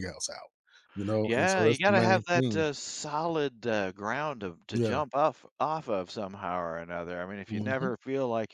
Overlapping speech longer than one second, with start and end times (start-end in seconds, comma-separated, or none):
1.2-2.6